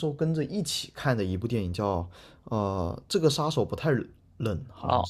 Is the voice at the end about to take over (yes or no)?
yes